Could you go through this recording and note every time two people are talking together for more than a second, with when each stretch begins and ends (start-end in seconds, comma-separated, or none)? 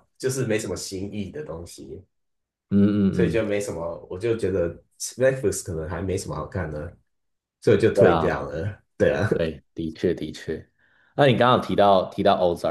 none